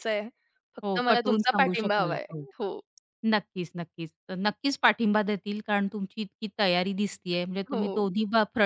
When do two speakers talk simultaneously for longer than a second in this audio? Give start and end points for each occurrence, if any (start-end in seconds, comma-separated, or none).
0.8-2.4